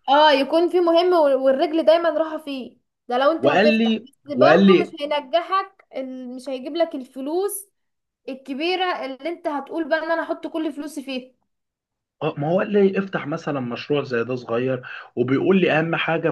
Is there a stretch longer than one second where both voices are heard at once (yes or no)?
yes